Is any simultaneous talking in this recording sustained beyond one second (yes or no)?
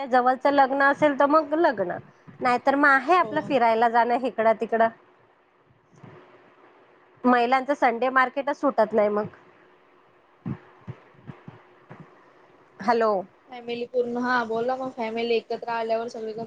no